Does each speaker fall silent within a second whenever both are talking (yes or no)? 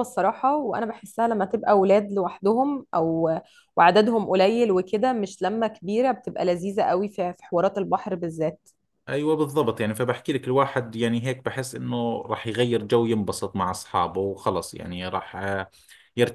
yes